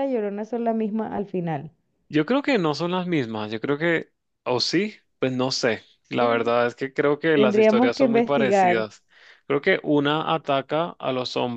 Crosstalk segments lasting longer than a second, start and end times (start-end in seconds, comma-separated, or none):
7.3-8.8